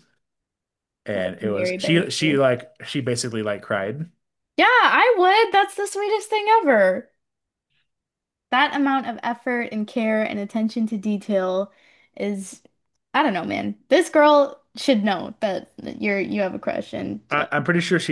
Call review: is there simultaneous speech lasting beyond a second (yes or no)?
yes